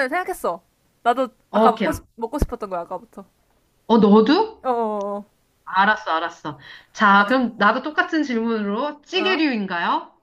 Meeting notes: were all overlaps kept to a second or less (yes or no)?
yes